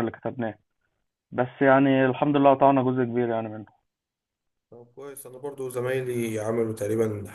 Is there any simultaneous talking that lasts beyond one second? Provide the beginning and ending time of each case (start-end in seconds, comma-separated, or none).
none